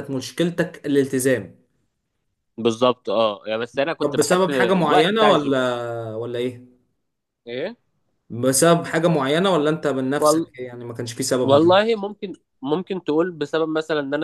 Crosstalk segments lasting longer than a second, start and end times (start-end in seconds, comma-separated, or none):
4.0-5.6